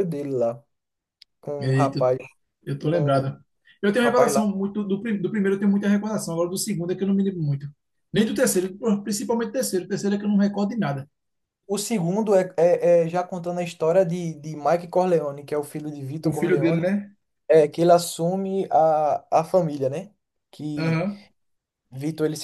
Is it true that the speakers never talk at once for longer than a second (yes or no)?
yes